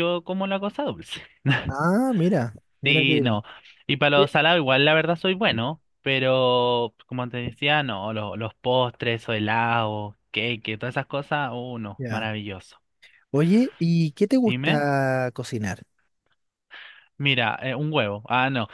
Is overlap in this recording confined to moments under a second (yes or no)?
yes